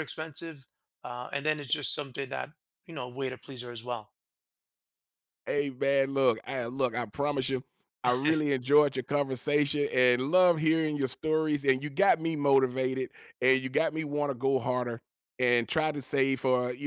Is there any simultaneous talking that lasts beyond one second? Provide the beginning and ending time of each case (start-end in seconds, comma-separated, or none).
none